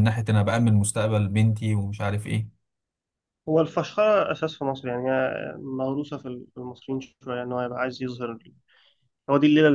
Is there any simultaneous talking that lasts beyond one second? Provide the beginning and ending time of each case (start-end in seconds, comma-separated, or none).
none